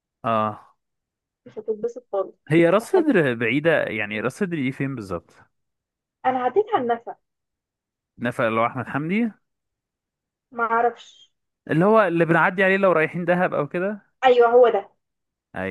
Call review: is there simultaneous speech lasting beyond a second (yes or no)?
no